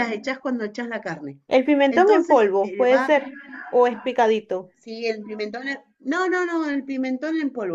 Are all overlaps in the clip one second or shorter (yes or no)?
no